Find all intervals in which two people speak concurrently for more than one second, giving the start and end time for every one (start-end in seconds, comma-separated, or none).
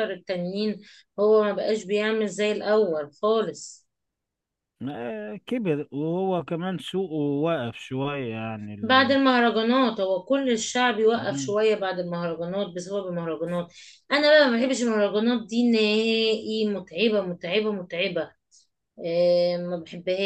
none